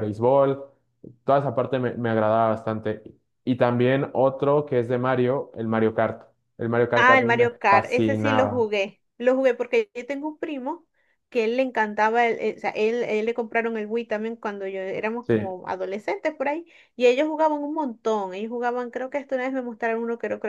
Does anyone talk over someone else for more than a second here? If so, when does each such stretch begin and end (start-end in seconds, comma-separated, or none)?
6.9-8.7